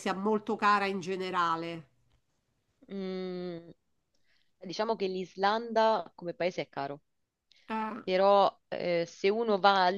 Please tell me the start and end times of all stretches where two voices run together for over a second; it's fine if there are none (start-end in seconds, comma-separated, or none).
none